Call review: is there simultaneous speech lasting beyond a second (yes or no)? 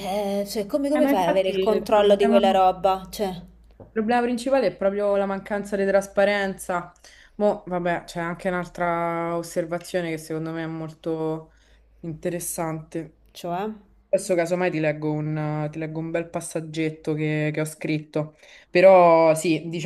yes